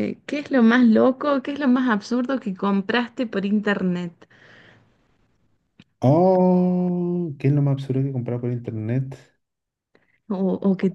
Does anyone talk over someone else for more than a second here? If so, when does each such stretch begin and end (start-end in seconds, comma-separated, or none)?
none